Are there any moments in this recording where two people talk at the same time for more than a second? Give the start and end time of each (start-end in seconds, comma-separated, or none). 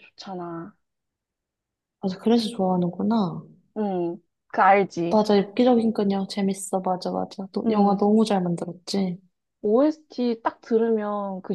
none